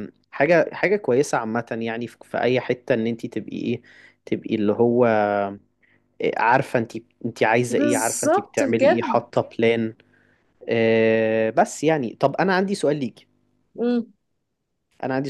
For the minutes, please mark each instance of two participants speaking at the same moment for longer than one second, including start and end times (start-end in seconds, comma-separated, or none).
7.7-9.1